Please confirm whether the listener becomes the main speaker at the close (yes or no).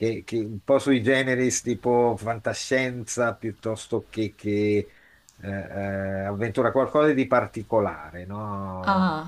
yes